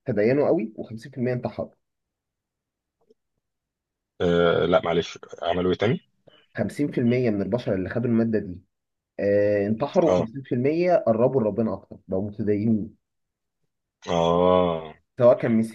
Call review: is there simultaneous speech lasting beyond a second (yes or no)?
no